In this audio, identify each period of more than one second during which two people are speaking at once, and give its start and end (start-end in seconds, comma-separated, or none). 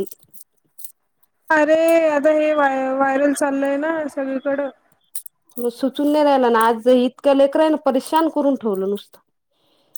none